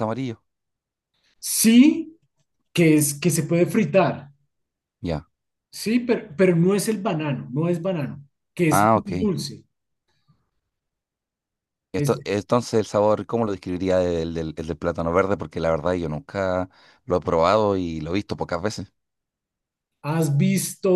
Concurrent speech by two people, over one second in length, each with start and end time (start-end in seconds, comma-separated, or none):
none